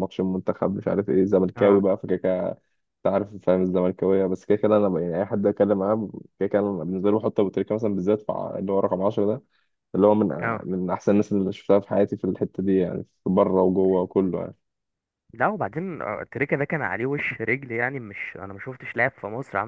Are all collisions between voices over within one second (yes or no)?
yes